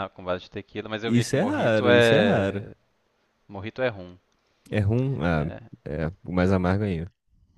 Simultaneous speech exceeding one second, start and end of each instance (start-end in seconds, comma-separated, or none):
1.0-2.6